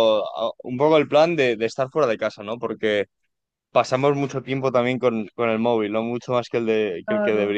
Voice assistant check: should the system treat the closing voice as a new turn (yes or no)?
yes